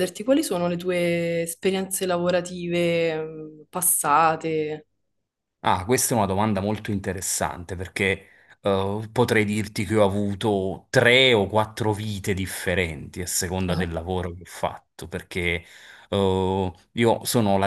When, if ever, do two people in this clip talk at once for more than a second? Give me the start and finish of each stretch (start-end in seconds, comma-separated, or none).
none